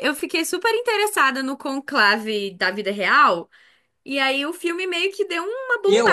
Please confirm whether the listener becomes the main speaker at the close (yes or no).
yes